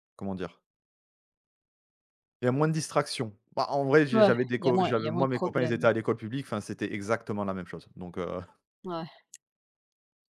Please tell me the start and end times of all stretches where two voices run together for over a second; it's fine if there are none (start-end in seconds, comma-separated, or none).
4.1-5.9